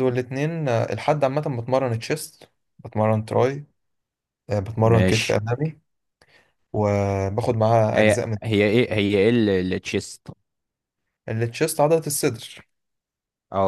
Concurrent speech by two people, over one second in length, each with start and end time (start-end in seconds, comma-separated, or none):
none